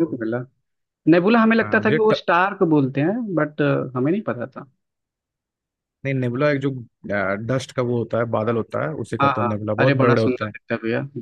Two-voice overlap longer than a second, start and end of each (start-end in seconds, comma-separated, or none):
9.2-10.5